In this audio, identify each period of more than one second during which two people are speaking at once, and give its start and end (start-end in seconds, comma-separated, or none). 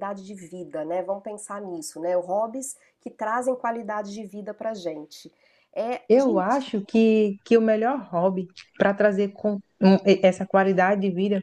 none